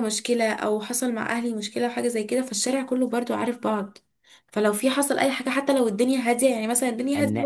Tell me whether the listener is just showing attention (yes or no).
yes